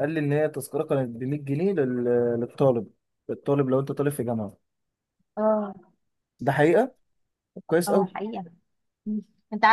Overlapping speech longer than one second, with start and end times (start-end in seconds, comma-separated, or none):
none